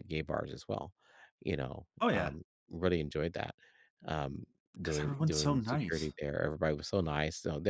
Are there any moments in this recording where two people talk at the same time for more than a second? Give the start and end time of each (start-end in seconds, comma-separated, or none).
4.8-6.1